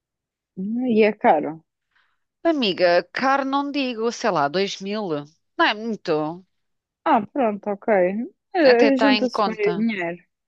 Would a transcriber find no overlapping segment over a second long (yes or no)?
no